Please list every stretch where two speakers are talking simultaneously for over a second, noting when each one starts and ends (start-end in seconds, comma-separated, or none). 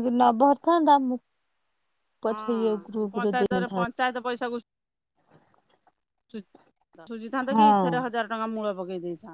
2.3-4.0